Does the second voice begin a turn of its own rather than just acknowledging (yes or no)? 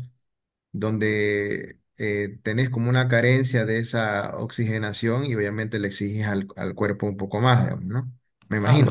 yes